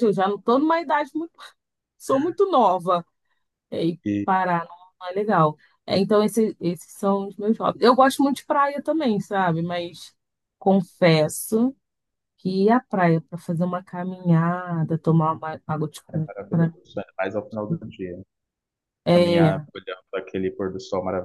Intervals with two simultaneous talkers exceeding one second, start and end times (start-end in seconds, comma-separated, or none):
none